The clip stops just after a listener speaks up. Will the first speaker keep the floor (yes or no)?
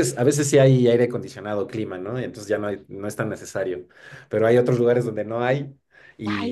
yes